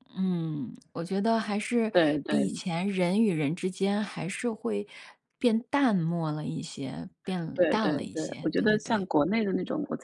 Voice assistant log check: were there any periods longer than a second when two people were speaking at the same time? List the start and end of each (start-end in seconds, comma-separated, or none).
7.5-9.1